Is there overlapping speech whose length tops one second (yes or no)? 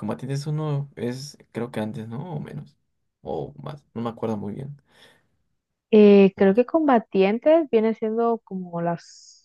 no